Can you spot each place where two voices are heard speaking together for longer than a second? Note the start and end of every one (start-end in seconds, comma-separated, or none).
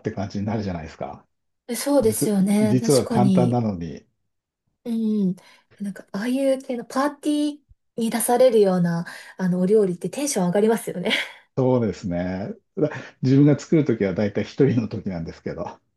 2.0-3.6